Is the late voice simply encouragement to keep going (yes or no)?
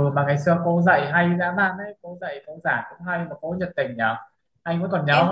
yes